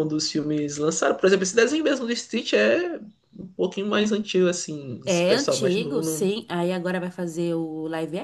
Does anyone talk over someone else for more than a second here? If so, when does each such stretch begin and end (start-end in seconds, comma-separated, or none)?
5.0-6.3